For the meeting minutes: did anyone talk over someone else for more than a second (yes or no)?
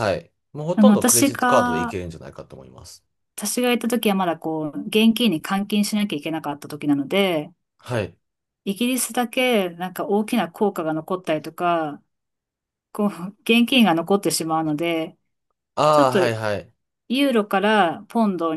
yes